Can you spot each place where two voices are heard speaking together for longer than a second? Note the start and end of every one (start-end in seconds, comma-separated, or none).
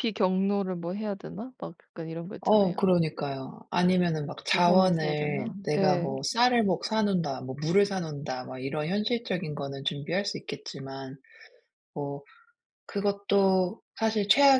4.5-6.1